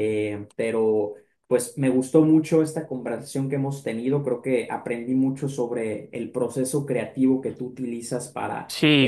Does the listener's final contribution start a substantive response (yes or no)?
yes